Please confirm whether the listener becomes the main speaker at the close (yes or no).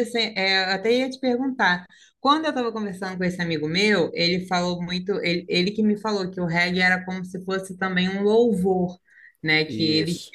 no